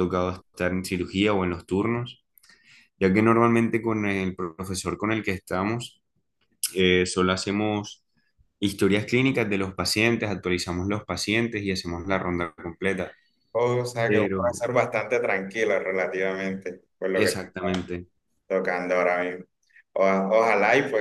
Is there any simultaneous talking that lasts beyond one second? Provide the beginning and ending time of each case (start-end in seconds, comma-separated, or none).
none